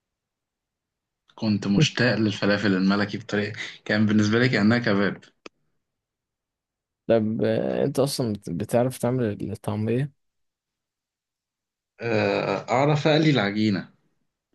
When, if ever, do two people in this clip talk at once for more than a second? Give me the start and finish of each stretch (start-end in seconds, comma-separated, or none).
none